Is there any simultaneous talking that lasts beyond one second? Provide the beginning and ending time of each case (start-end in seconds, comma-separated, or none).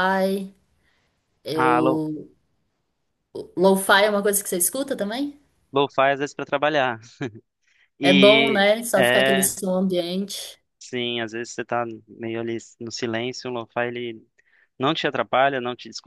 8.0-9.5